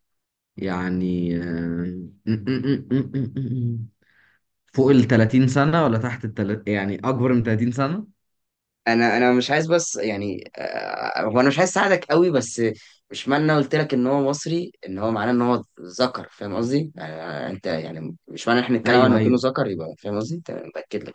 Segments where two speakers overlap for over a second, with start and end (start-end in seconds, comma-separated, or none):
none